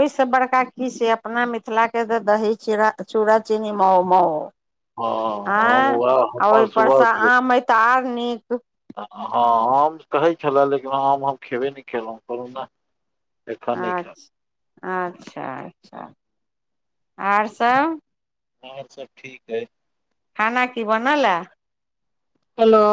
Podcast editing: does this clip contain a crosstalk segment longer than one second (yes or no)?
yes